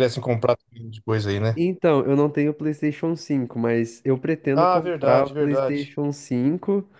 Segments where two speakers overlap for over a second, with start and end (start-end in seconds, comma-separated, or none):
4.5-5.9